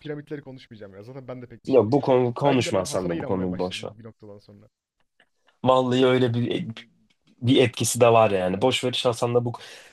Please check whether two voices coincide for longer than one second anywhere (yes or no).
yes